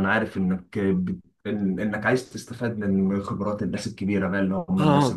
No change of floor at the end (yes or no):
yes